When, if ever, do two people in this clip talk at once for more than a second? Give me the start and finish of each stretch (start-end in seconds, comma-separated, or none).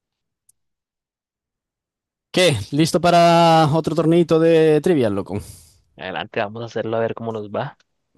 none